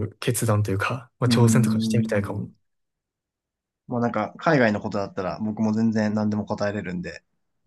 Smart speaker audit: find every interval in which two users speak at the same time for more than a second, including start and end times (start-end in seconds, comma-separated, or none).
1.2-2.5